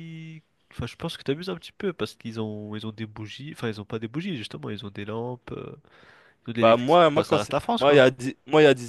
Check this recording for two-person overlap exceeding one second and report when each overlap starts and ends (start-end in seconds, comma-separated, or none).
6.6-8.0